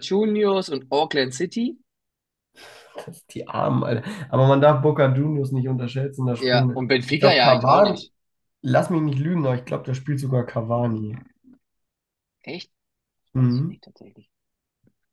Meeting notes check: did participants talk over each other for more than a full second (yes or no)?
yes